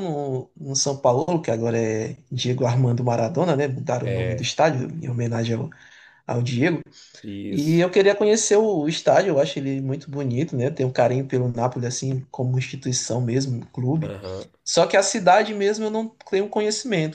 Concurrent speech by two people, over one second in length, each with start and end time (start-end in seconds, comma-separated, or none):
none